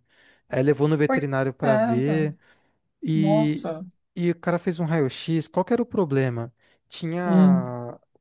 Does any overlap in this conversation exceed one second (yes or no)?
yes